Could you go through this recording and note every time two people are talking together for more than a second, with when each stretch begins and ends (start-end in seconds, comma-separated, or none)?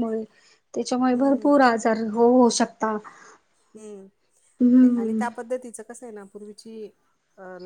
none